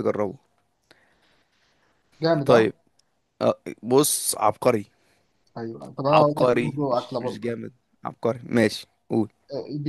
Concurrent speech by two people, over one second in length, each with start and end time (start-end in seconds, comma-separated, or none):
6.1-7.5